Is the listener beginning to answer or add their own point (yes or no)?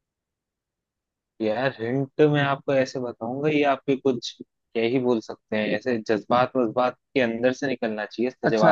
yes